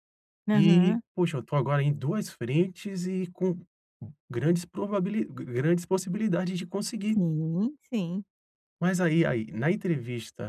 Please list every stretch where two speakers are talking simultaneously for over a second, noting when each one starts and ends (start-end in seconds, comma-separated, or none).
none